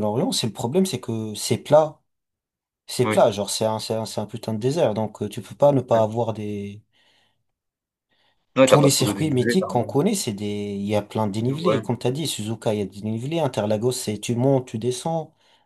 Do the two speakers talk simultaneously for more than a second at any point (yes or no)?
yes